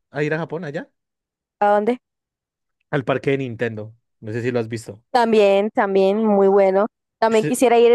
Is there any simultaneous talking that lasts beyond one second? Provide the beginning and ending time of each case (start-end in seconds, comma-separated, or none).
none